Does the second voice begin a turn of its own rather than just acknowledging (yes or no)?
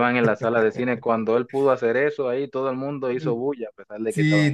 yes